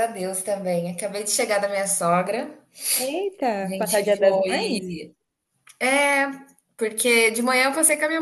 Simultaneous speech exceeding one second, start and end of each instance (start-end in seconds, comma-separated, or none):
3.6-4.9